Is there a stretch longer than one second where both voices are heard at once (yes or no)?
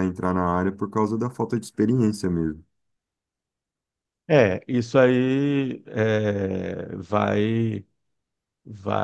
no